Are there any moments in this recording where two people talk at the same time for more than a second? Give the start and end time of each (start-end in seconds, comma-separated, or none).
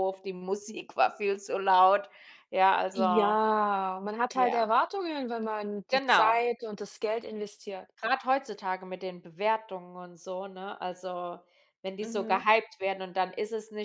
none